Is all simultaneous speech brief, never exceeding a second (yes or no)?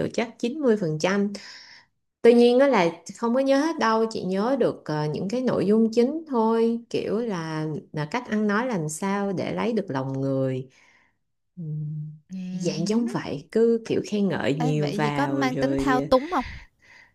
no